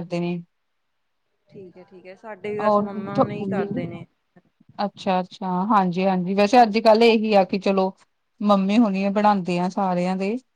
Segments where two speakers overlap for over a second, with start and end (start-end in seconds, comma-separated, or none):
none